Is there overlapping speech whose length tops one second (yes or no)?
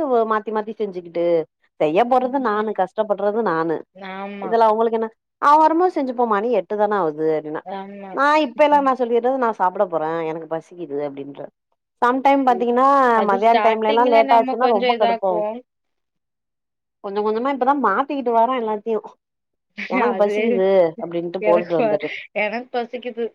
yes